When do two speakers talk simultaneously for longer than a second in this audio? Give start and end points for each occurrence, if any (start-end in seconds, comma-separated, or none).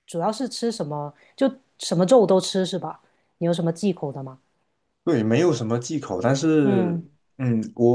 none